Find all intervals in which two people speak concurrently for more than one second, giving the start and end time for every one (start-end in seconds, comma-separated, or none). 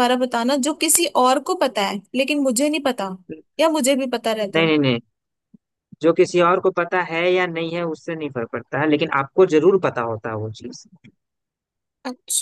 none